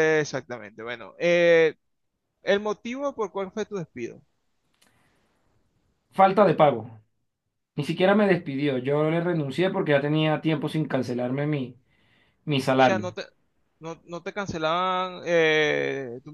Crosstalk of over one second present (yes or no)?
no